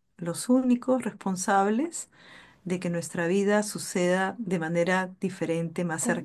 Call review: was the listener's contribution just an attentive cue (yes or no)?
no